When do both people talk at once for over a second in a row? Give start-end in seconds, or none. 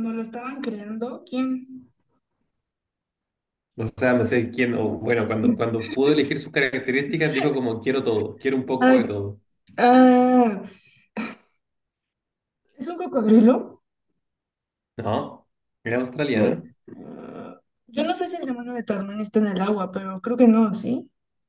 none